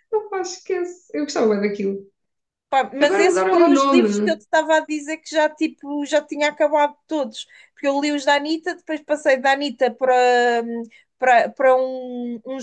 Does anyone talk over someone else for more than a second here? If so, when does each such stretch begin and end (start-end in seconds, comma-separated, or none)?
3.0-4.4